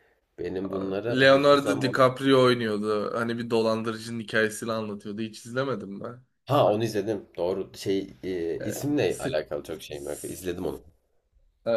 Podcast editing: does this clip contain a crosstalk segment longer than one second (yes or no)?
yes